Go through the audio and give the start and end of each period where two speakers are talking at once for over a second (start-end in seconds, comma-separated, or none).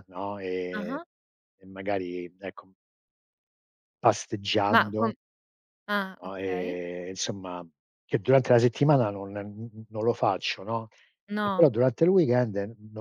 none